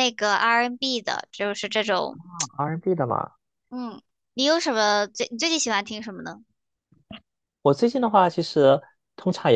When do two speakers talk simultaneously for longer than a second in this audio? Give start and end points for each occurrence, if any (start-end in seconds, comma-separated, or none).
none